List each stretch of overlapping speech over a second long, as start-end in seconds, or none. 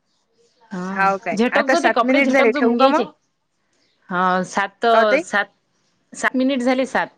1.4-3.0